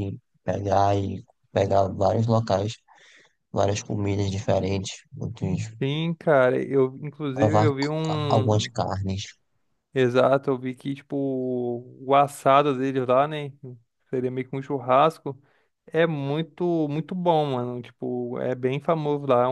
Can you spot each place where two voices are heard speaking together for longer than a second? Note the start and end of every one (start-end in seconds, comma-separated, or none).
7.3-8.7